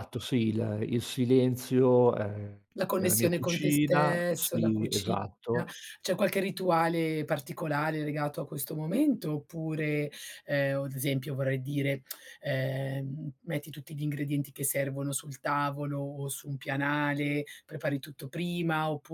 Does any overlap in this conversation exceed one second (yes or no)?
yes